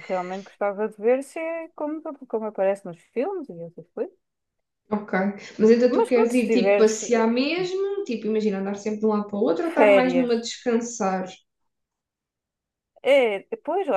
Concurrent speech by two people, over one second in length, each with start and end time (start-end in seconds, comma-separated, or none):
5.9-7.3